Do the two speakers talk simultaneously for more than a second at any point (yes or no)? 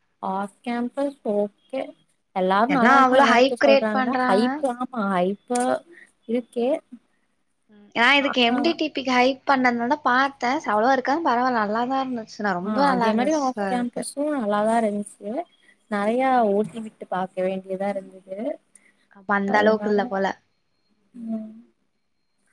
yes